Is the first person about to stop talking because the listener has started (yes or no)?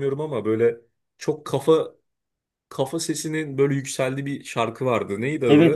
yes